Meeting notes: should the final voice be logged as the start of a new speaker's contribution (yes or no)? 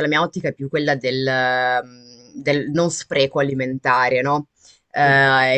no